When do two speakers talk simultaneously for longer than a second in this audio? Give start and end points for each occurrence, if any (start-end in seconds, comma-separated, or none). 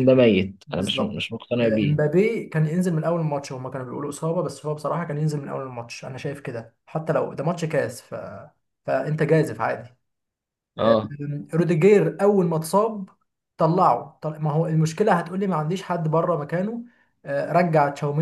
0.7-2.2